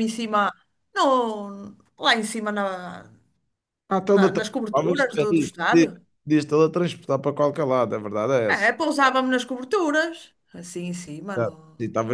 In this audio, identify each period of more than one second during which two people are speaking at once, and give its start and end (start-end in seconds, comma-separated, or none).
4.1-5.9